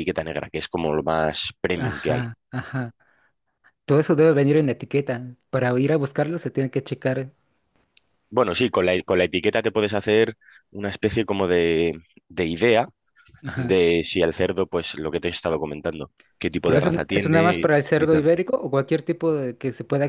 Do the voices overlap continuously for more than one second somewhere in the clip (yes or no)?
yes